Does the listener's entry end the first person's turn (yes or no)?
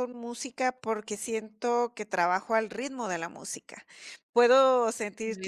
no